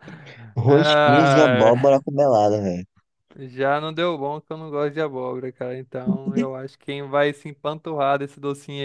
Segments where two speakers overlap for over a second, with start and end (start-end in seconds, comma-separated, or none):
0.7-2.0